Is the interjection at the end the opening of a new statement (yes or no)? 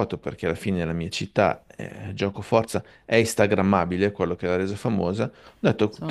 no